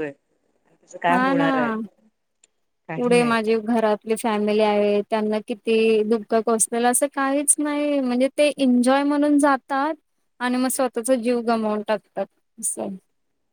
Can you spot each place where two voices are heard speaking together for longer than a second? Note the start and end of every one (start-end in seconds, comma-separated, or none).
none